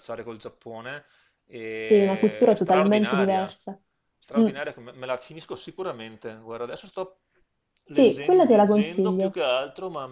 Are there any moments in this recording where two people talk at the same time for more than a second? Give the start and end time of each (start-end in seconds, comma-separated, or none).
1.9-3.5, 7.9-9.4